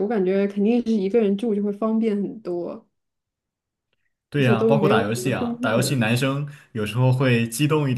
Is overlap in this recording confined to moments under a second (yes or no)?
no